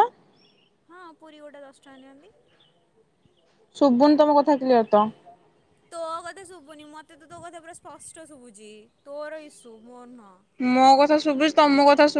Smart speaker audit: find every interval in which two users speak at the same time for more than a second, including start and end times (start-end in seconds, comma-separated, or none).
none